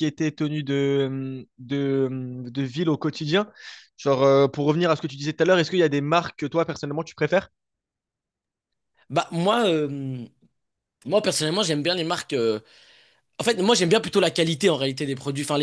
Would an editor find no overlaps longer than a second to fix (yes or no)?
yes